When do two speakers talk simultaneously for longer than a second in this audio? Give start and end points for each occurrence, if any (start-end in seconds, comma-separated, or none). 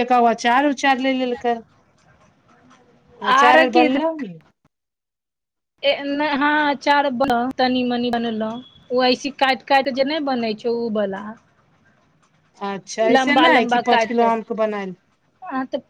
13.2-14.9